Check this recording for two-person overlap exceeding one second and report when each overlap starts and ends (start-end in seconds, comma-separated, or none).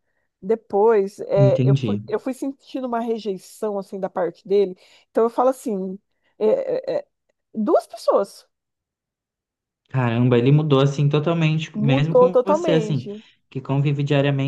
11.8-13.1